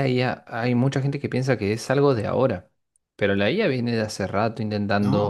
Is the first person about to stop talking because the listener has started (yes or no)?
no